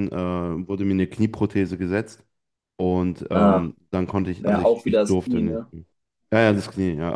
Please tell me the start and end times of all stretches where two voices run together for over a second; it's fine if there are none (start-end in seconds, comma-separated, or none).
4.4-5.7